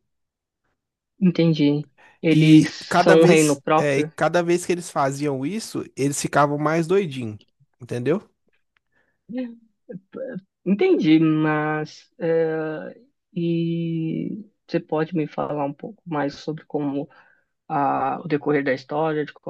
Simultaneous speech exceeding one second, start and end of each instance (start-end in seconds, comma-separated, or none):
2.3-4.1